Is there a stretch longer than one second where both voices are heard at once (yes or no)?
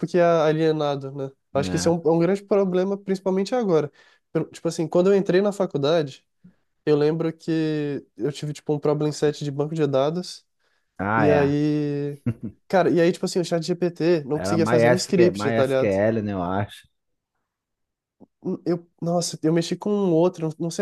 yes